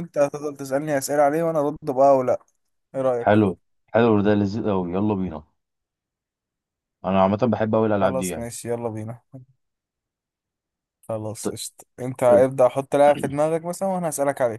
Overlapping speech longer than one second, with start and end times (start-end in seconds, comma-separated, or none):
none